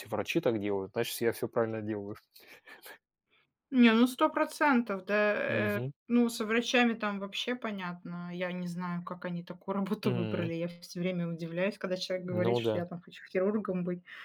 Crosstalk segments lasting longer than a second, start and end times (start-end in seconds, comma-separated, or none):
none